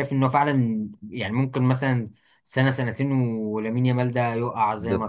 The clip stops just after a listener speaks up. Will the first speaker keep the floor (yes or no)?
no